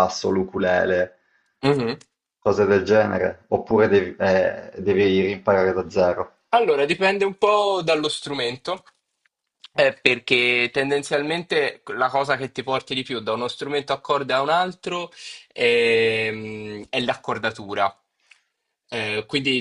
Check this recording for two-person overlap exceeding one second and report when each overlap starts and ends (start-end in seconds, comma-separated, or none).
none